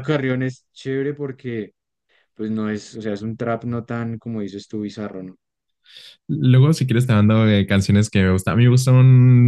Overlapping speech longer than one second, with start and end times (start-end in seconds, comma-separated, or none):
none